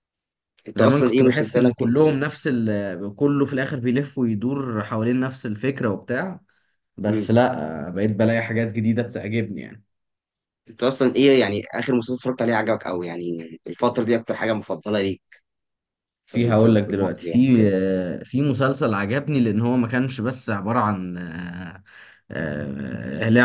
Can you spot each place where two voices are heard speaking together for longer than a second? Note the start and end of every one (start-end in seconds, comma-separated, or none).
0.8-2.1, 16.3-17.7